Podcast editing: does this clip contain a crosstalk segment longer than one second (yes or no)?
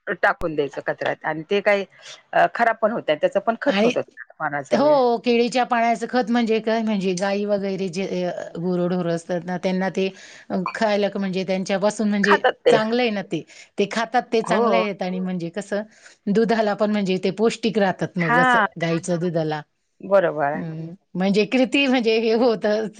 no